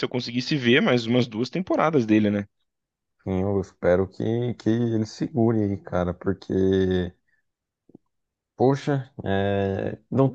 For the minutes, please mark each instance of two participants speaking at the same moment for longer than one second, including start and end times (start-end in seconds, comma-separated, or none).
none